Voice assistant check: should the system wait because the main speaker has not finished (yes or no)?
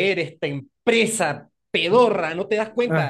yes